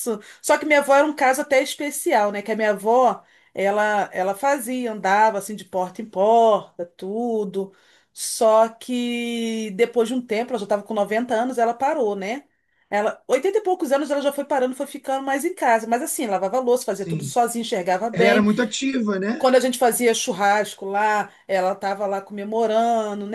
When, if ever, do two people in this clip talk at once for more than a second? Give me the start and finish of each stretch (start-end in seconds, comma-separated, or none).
none